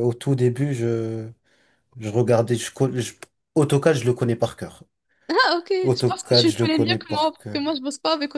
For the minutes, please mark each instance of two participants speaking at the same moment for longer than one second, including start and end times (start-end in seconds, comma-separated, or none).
5.8-7.6